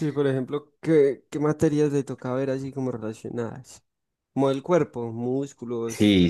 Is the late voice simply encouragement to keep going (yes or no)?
no